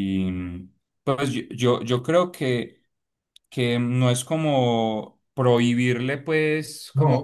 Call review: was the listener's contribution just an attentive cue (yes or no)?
yes